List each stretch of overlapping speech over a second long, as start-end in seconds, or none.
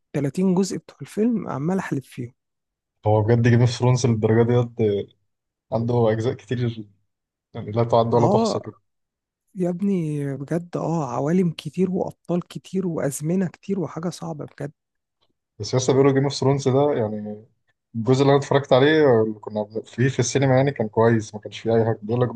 none